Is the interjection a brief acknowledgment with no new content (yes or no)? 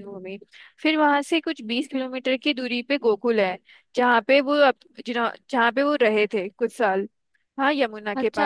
no